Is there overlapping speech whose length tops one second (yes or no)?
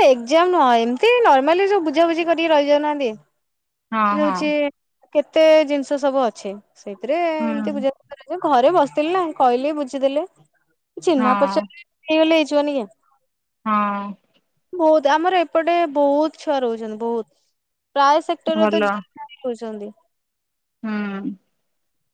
no